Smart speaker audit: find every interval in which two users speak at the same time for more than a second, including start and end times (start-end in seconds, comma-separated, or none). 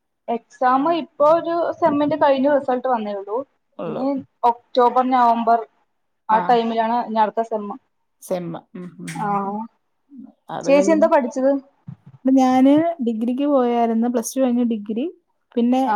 none